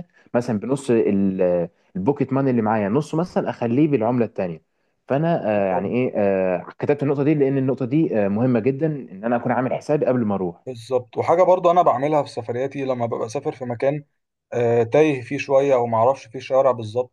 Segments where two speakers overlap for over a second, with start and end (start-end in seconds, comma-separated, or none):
none